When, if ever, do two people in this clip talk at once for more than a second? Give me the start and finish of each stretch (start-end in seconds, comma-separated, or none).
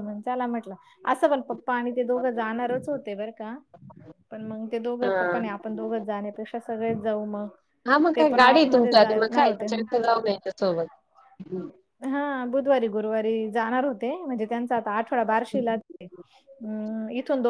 8.2-9.8